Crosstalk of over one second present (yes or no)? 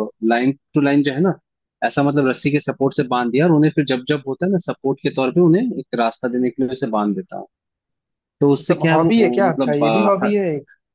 yes